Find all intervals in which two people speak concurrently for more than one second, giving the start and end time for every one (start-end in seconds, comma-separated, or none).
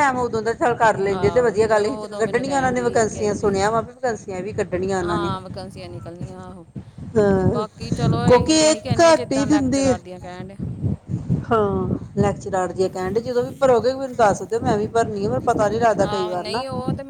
1.2-3.5, 8.3-10.0